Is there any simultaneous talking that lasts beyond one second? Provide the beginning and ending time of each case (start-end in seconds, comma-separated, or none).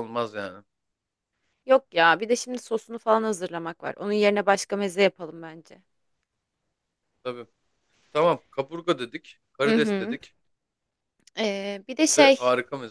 none